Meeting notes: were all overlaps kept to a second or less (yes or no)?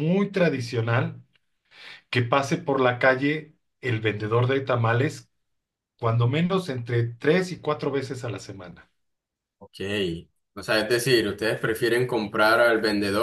yes